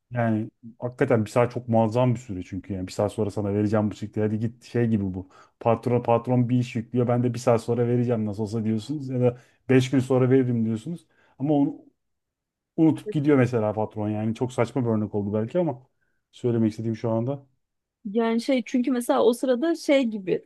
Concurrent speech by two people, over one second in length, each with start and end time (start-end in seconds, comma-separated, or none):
none